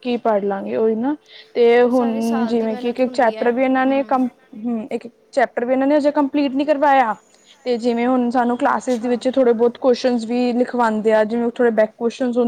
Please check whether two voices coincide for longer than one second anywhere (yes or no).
yes